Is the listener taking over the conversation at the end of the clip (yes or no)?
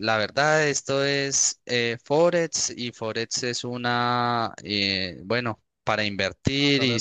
no